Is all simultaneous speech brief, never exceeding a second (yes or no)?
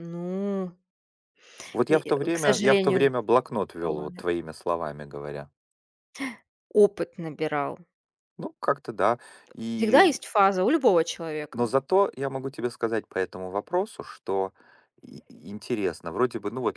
no